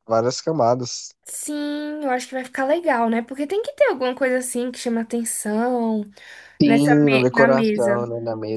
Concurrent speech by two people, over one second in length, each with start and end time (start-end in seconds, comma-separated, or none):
6.6-8.1